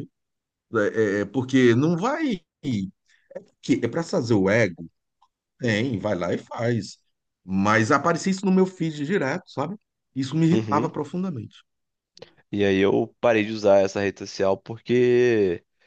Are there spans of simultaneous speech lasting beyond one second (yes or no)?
no